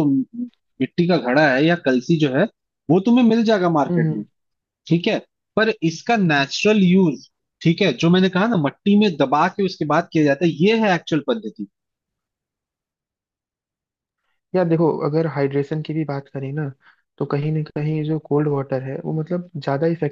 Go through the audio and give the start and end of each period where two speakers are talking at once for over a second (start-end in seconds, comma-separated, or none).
none